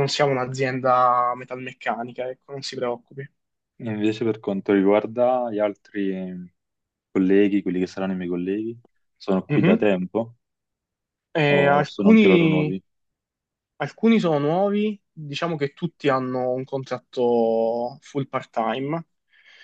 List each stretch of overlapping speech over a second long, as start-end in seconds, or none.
11.5-12.8